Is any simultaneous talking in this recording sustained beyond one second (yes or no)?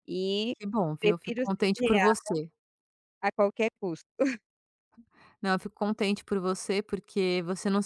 yes